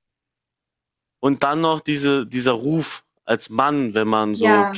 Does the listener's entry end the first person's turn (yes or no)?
no